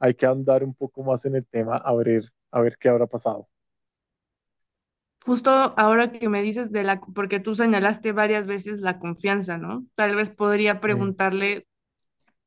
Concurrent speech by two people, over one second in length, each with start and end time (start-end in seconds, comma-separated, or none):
none